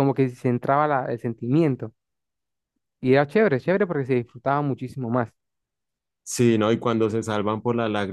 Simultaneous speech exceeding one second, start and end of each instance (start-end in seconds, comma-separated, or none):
none